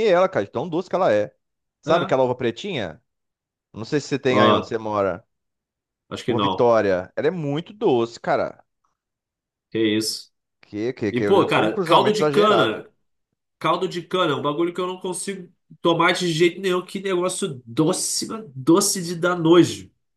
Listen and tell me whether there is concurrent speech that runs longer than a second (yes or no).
yes